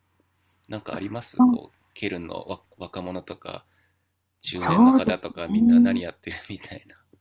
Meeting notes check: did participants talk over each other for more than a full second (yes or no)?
yes